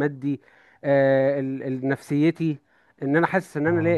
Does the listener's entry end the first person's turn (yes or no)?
no